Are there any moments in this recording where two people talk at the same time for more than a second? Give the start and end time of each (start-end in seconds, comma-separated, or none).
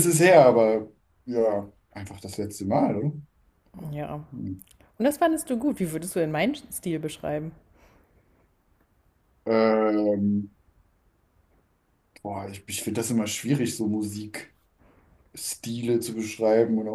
none